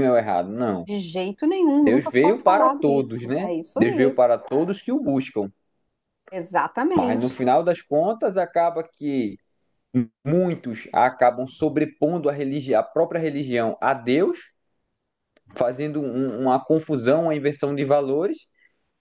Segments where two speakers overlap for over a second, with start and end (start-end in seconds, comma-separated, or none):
1.8-4.2